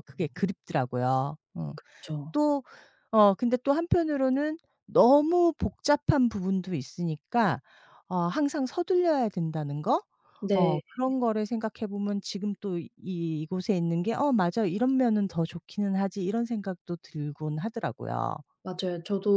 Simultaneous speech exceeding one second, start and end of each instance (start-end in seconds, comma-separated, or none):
none